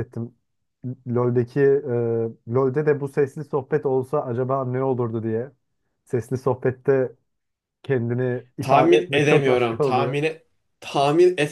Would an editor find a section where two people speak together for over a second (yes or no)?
yes